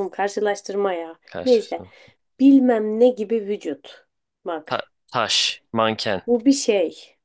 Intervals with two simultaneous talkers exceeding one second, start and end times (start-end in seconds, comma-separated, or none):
none